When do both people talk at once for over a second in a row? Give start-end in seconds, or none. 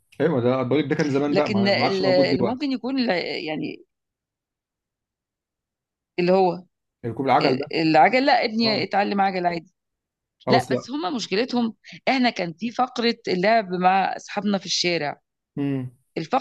1.3-2.7